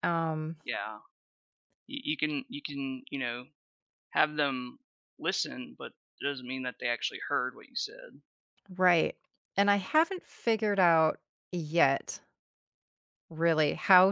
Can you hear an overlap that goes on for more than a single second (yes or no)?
no